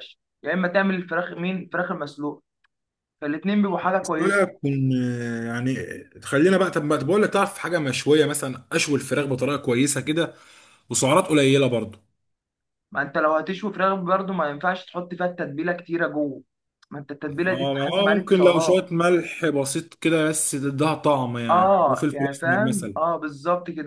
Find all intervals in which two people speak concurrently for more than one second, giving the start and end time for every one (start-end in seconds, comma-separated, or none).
17.5-18.9, 21.5-22.9